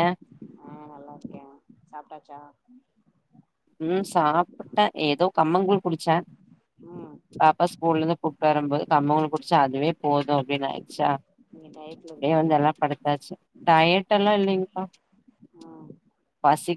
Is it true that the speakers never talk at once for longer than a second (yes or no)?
yes